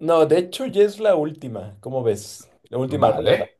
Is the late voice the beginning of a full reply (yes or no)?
yes